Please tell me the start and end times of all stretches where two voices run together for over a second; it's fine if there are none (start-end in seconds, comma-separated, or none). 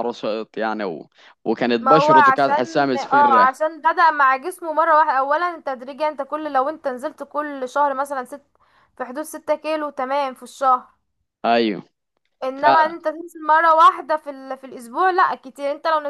1.8-3.6